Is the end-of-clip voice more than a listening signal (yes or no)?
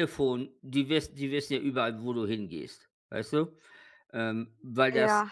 no